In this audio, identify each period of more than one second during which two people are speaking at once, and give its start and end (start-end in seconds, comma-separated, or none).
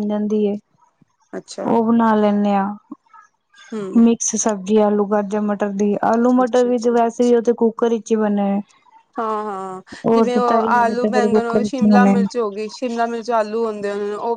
10.3-12.2